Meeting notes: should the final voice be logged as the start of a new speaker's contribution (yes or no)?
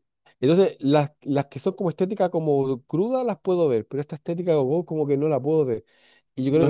no